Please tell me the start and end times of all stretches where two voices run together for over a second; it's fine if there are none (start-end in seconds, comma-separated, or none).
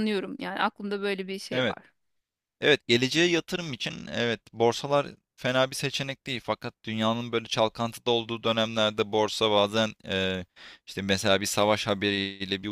none